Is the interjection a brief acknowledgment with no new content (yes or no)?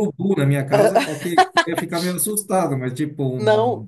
no